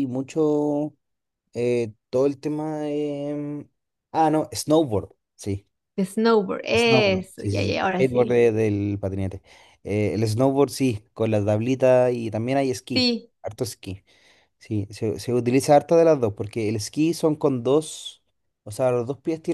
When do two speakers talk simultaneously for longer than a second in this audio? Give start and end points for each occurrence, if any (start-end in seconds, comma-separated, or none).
6.7-8.4